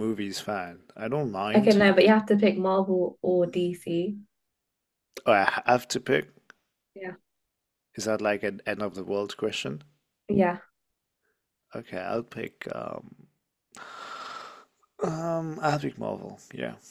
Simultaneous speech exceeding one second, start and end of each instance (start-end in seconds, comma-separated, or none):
none